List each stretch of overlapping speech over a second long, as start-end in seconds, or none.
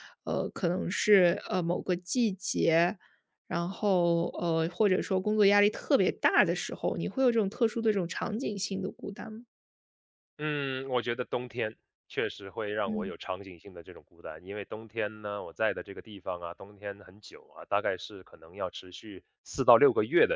none